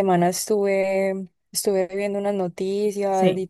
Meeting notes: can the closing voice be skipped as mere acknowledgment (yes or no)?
yes